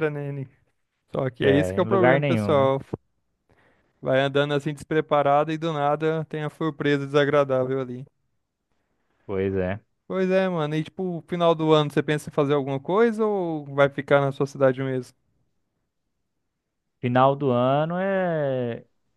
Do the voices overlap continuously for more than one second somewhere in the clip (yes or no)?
yes